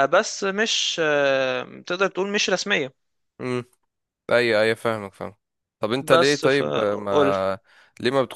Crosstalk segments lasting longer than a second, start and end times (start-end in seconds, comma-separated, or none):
6.0-7.3